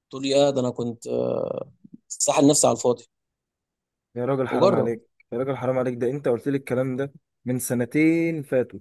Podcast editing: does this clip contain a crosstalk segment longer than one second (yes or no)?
no